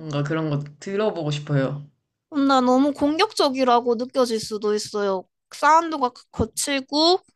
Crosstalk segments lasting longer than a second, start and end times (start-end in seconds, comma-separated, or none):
none